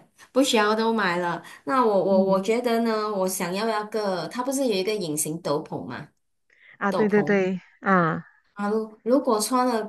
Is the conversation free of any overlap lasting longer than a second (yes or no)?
yes